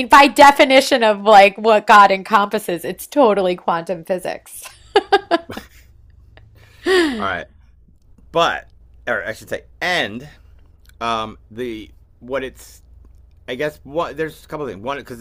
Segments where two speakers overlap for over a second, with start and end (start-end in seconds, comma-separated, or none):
none